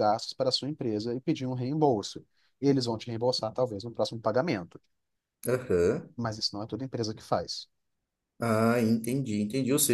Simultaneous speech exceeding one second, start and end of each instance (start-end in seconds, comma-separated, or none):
none